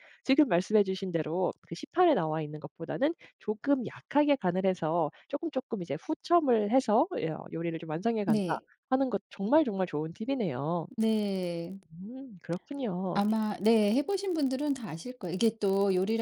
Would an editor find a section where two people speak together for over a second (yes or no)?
no